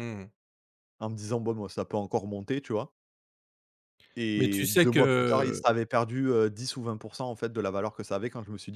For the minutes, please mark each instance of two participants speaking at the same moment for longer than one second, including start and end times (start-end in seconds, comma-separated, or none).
4.4-5.6